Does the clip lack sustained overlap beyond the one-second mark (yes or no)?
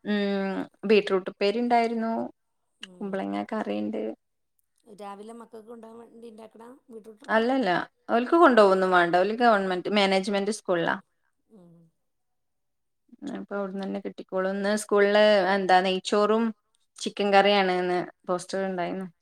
yes